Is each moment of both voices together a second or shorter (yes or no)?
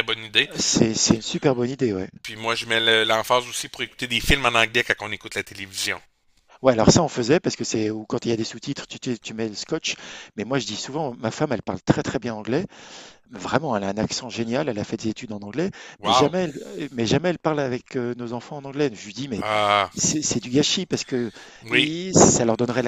yes